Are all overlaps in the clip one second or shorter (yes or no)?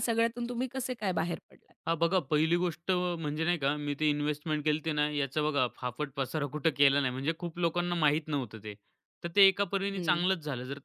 yes